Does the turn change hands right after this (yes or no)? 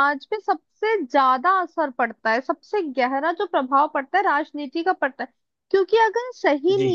no